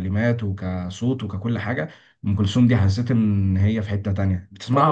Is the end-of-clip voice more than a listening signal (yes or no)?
yes